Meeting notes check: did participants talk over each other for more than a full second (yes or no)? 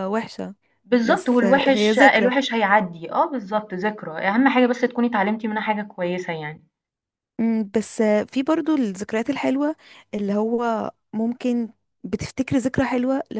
yes